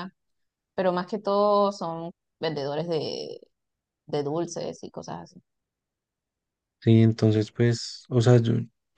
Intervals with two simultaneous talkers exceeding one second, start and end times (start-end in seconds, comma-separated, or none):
none